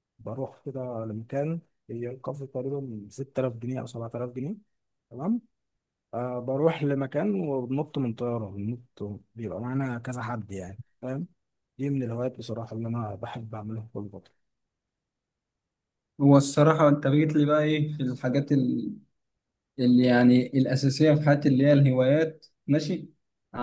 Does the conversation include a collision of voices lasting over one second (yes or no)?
no